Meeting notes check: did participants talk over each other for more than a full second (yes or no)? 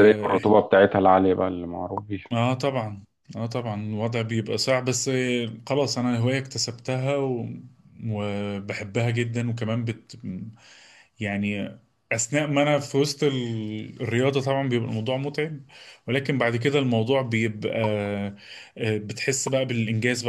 no